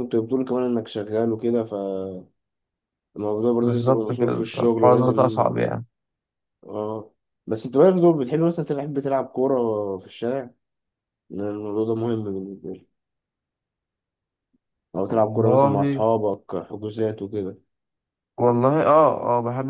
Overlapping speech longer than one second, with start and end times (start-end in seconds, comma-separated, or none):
3.6-5.5